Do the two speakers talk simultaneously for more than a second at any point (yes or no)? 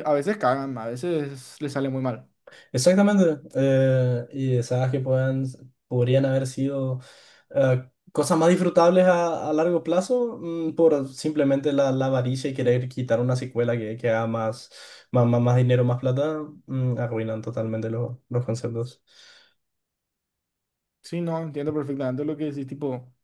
no